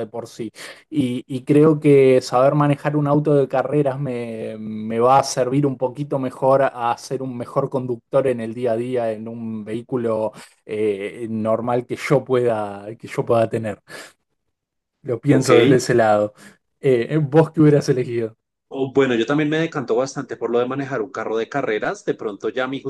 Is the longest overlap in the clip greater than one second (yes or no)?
no